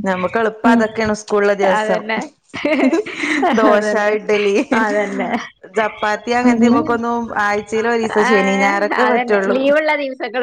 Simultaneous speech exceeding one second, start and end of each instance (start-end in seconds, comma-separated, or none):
none